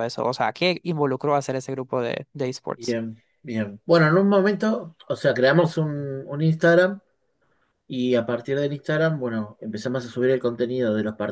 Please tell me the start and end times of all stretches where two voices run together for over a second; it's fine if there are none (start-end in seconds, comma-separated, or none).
none